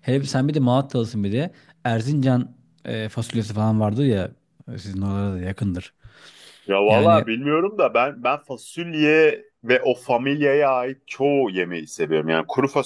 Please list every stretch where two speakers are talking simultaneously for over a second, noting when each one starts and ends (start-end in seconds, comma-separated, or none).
none